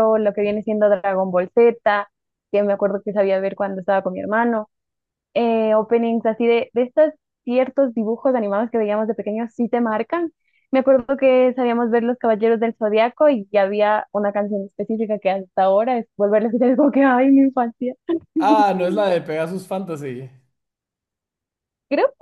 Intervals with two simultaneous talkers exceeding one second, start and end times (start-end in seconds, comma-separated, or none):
none